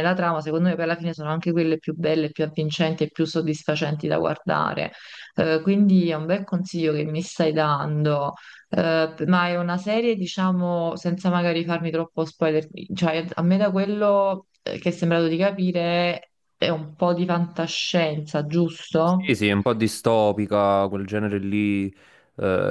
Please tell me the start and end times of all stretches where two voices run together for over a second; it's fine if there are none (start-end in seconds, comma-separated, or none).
none